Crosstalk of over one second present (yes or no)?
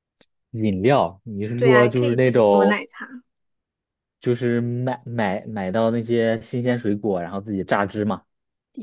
yes